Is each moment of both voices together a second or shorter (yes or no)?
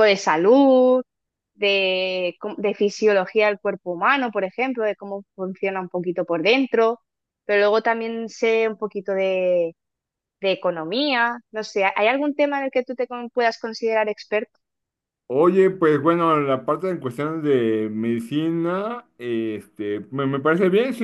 yes